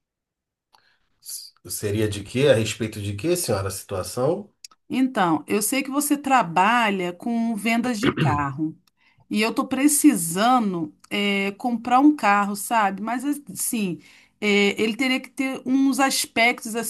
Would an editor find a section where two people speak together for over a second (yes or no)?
no